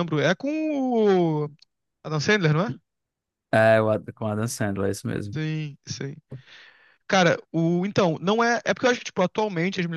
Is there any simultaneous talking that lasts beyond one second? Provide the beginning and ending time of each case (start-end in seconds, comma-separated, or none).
none